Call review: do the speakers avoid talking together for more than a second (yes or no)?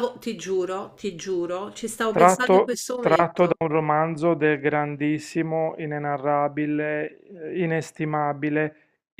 no